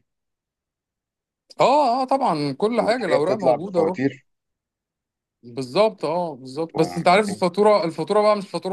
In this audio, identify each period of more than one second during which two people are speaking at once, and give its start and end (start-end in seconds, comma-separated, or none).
2.8-4.0